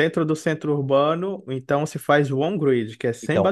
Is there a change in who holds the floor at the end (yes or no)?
yes